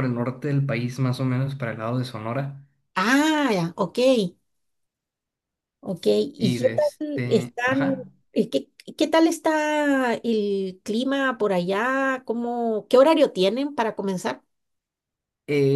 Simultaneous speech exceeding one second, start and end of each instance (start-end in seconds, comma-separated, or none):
6.4-8.0